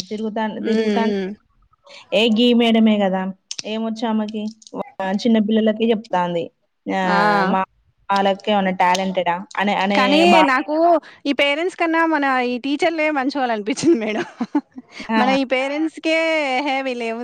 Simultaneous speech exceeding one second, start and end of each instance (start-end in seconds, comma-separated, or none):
none